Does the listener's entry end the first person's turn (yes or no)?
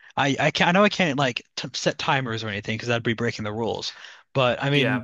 no